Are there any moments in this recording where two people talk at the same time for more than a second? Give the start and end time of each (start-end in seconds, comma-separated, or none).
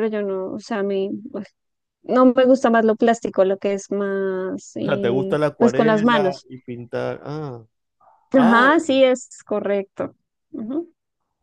4.8-6.5